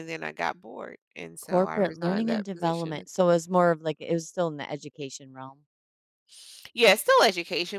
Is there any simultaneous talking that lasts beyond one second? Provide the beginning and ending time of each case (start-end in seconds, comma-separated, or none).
1.4-3.0